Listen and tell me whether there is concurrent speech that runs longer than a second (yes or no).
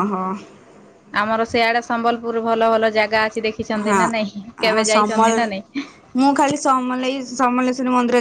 yes